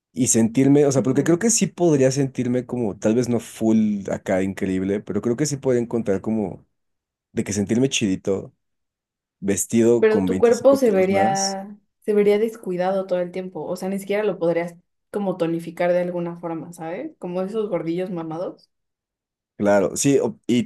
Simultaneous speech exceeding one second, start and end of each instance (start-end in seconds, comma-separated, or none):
10.0-11.6